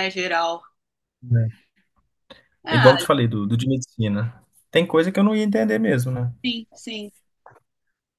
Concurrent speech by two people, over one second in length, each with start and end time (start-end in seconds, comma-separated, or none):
none